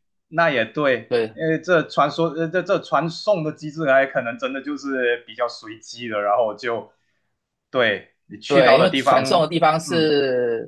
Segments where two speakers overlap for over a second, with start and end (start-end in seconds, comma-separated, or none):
8.5-10.1